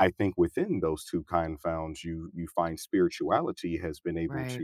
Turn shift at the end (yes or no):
no